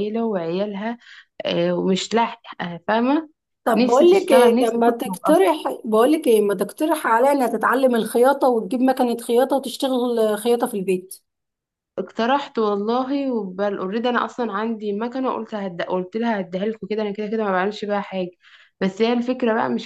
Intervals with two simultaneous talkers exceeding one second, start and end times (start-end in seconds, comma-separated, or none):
3.8-5.4